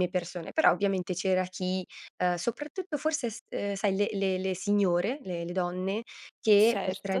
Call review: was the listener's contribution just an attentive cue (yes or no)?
yes